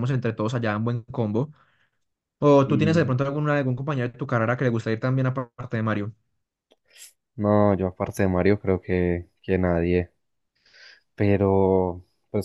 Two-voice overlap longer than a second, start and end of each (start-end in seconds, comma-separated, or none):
none